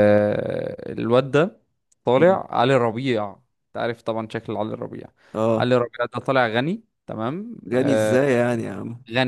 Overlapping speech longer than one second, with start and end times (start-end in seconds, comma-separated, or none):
none